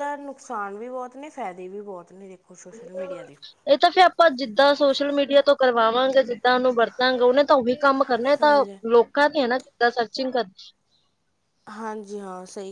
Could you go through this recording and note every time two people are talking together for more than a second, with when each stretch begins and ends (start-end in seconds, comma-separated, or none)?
none